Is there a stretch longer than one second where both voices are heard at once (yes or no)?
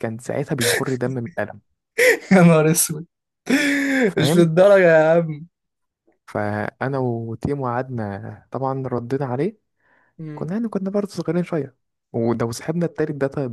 no